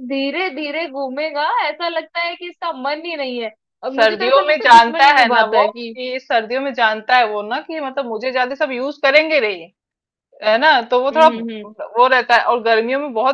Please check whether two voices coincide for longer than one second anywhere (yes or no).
yes